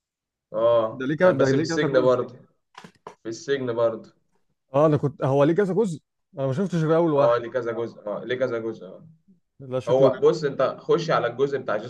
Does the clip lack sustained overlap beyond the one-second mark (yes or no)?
no